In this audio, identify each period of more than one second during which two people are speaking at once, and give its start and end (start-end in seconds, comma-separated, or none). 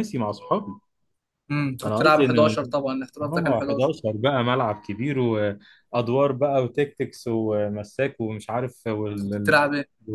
none